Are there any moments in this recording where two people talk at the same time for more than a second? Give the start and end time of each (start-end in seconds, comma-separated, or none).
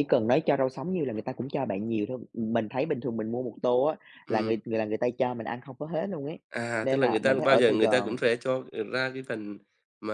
6.8-8.1